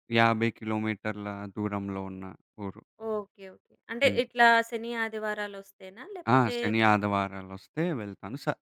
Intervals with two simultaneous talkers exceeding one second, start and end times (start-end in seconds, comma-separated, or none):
none